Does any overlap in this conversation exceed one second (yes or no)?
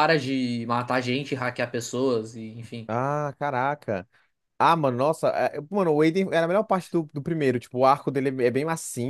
no